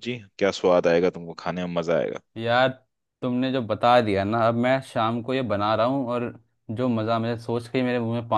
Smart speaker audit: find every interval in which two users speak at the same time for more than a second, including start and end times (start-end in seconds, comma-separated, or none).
none